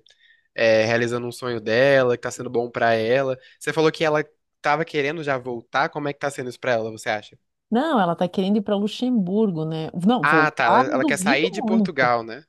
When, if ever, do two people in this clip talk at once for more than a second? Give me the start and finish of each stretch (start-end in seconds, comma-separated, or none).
10.2-11.9